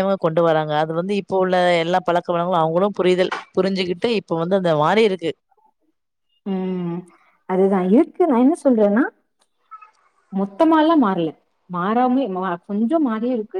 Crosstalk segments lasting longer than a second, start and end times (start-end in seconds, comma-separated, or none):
none